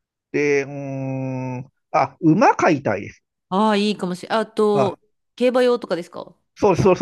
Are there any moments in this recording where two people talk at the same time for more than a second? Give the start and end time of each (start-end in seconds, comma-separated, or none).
none